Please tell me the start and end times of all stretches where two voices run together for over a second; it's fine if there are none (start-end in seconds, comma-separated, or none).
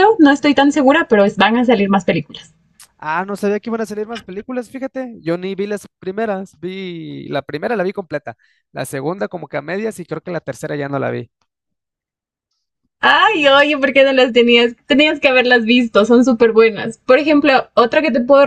none